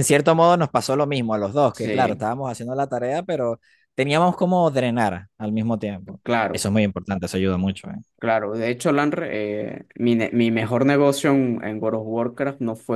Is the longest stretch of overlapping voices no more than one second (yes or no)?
yes